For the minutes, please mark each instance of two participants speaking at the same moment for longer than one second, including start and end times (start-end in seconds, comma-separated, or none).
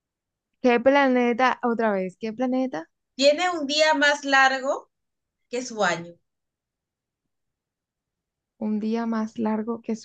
none